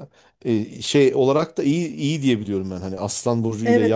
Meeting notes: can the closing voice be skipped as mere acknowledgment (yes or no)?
no